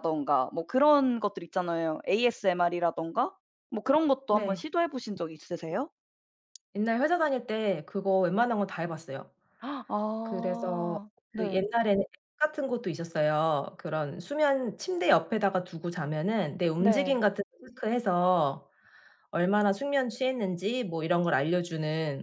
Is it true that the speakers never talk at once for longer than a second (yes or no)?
no